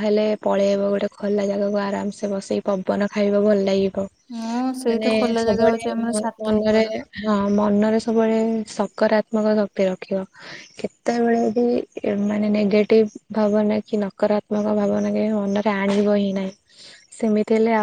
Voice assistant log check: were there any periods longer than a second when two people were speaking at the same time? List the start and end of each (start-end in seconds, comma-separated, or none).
4.9-6.8